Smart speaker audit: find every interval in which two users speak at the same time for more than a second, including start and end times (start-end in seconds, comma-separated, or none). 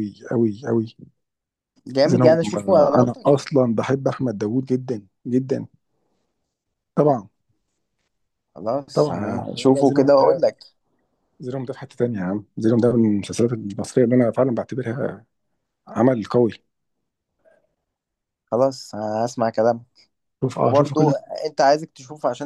2.0-3.3, 8.9-10.4